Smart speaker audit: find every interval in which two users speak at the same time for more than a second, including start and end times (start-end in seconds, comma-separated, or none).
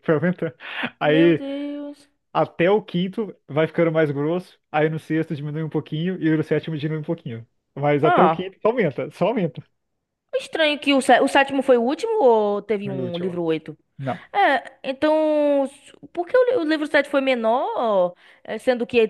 none